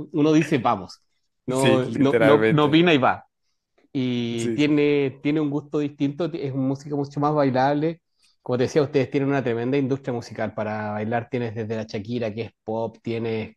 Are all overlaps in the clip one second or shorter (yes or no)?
no